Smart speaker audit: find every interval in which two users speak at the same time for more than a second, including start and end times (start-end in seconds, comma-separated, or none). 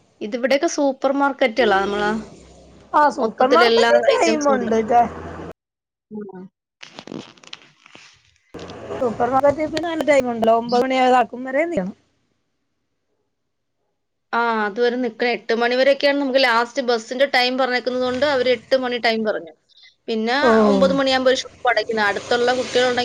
3.2-4.8